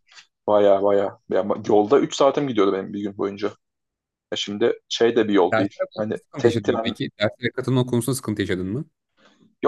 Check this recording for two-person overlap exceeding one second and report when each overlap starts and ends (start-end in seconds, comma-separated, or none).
5.5-6.9